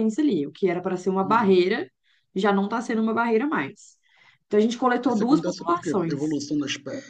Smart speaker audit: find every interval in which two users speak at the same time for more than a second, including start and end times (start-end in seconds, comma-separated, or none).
5.1-6.4